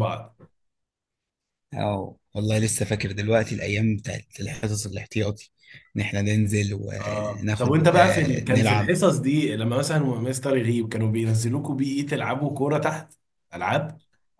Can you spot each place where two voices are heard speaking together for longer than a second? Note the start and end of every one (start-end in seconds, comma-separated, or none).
7.0-8.9